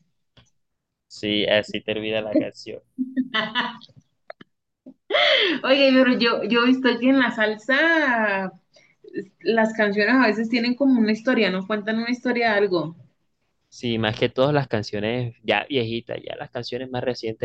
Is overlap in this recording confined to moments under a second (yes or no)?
yes